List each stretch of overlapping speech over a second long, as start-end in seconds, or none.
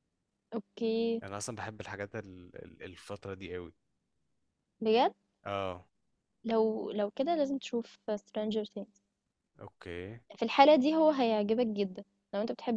none